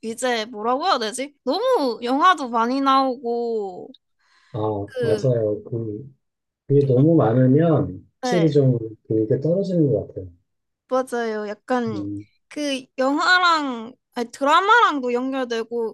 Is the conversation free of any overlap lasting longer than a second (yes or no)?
yes